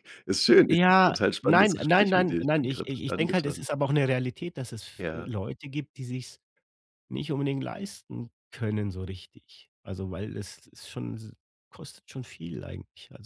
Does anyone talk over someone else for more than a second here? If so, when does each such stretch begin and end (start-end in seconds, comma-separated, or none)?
0.7-3.7